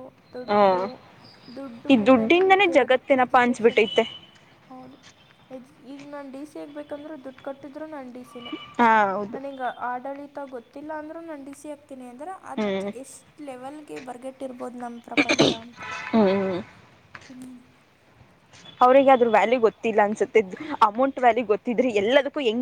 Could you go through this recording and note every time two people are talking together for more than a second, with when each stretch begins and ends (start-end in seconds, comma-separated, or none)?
1.9-3.8